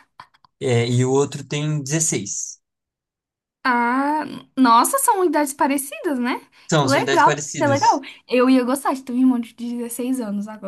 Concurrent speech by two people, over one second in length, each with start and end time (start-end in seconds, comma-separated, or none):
6.8-8.0